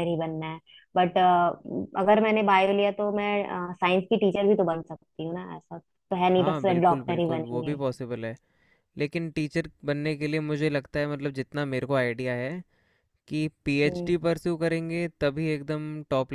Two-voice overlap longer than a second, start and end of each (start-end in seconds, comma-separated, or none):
6.3-7.8